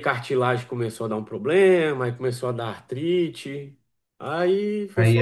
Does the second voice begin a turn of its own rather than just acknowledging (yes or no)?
yes